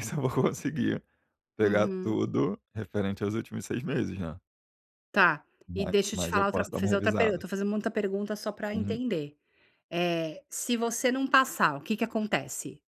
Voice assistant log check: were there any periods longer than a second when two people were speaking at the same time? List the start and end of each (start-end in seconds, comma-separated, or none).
5.7-7.4